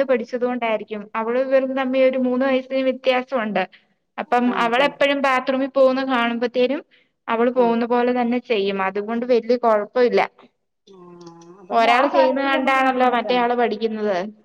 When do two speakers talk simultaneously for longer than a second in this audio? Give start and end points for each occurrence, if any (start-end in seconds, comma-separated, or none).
11.8-13.4